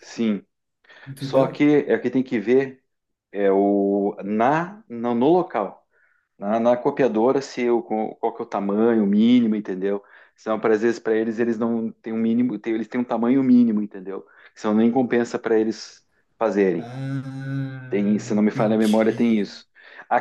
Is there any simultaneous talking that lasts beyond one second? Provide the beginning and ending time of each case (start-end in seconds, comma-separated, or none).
17.9-19.4